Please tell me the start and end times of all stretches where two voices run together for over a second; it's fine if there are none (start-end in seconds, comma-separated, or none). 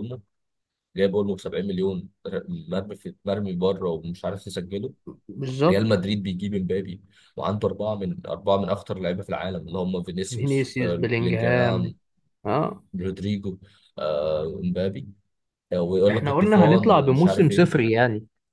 10.3-11.9, 16.1-17.7